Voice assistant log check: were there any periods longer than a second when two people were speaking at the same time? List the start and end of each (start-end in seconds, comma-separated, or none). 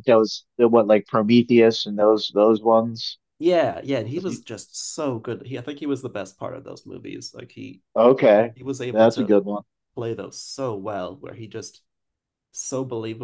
none